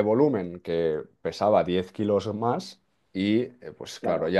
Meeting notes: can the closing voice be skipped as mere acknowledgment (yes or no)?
yes